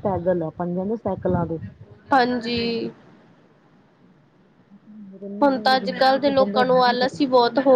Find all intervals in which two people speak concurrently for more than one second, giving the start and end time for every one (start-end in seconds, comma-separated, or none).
5.4-6.8